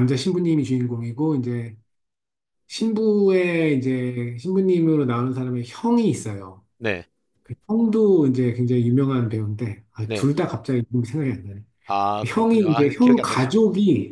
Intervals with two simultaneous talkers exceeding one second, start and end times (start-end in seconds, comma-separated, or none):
12.2-13.6